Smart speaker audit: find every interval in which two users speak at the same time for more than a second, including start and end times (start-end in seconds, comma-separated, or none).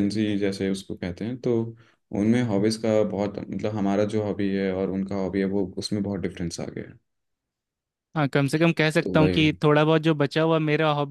none